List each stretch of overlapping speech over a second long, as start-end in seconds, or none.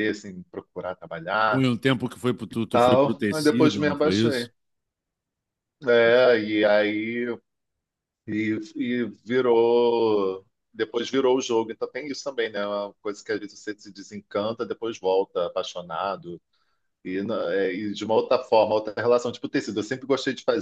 2.7-4.5